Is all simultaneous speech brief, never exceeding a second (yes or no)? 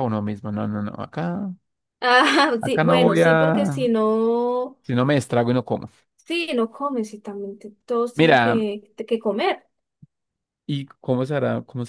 no